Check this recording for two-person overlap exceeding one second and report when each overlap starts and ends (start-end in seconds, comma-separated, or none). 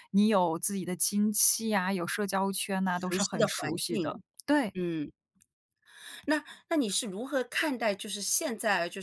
2.9-4.2